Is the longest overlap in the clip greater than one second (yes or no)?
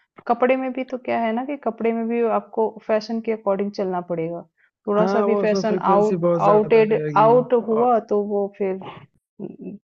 yes